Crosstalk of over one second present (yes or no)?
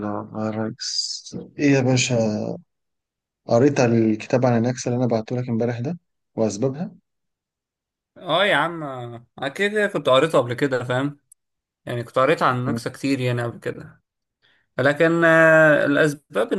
no